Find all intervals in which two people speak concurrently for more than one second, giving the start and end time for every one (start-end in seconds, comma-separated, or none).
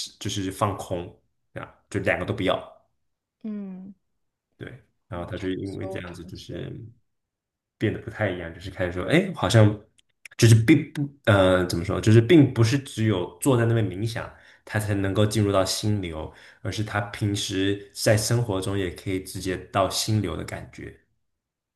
5.1-6.7